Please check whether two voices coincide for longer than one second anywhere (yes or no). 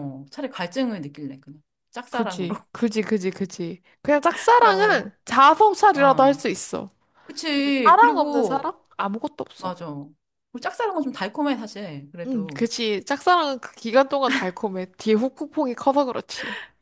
yes